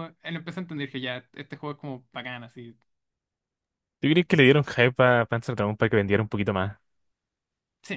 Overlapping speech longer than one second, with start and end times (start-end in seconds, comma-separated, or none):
none